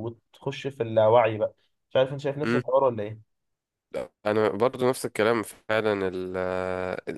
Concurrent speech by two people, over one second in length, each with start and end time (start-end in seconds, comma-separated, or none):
none